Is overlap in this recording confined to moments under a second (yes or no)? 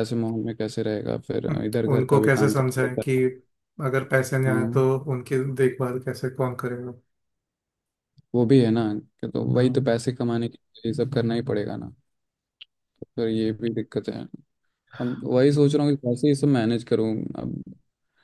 no